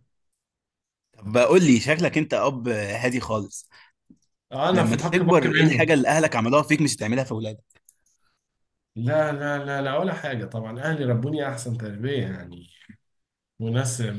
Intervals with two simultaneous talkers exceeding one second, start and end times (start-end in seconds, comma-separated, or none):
4.7-5.9